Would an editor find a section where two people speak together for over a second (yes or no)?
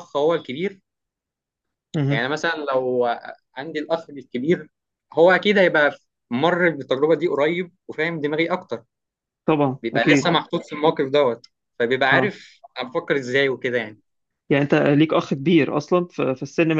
no